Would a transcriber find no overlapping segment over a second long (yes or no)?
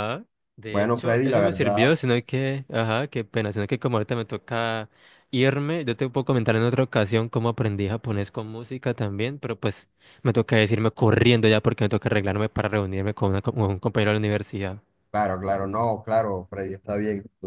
no